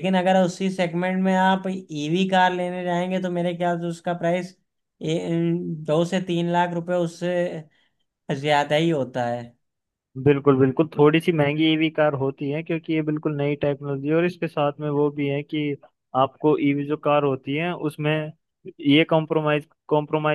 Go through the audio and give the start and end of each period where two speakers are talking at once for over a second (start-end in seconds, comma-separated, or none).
none